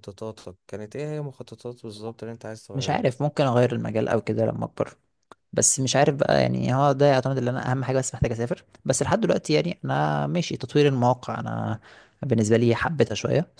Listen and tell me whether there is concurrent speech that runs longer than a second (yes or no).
no